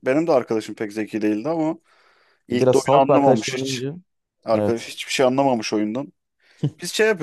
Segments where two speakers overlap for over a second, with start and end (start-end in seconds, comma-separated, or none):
2.5-3.9